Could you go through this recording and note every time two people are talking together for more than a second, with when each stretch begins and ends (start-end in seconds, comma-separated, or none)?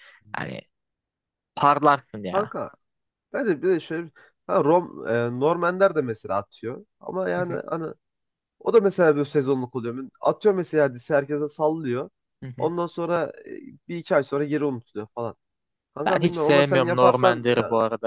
16.0-17.5